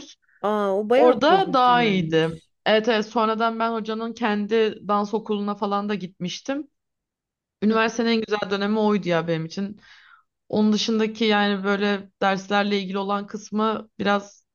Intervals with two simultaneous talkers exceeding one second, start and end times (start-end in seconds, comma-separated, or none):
1.0-2.5